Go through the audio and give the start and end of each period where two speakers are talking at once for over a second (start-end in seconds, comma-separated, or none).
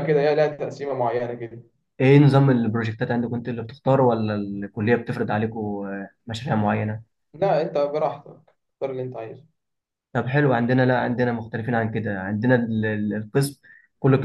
none